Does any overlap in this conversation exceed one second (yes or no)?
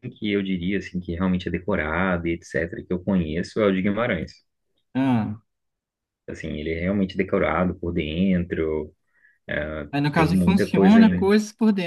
yes